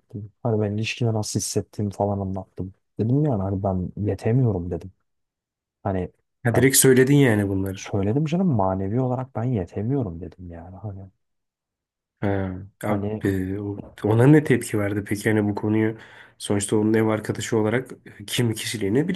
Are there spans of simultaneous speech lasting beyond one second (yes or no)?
no